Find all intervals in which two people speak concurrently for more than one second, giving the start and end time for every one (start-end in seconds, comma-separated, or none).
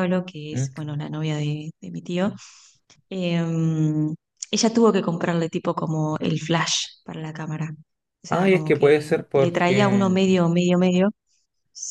8.3-10.1